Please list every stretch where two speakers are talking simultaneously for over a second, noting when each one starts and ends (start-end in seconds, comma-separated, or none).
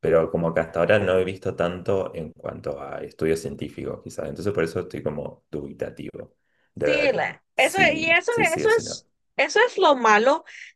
6.8-9.0